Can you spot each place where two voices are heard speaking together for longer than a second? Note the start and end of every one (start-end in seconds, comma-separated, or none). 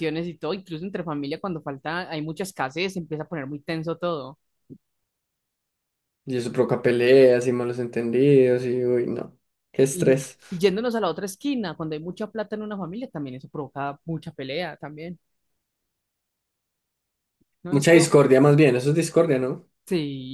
none